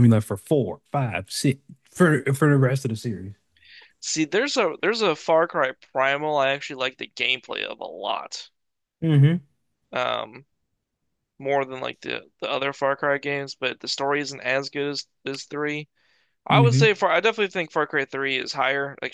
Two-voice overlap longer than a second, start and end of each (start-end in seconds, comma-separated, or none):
none